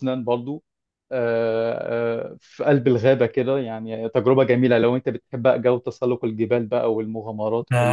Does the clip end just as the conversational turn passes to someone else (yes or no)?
yes